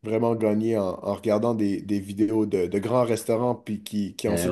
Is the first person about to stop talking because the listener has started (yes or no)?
yes